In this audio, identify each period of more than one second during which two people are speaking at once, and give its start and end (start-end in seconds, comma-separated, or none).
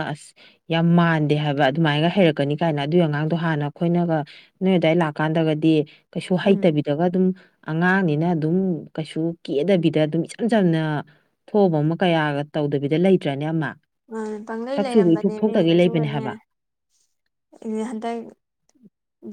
14.8-16.2